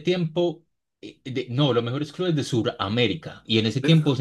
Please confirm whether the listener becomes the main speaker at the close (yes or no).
no